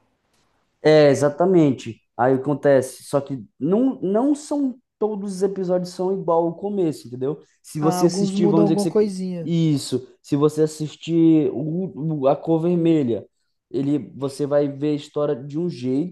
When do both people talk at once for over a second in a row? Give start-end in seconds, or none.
7.8-9.5